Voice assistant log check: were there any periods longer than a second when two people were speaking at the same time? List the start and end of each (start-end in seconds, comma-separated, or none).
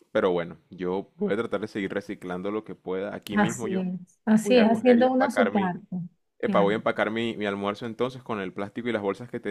4.4-5.8